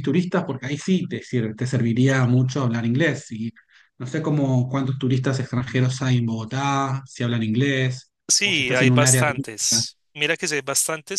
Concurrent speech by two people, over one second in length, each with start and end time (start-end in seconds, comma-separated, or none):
8.3-9.8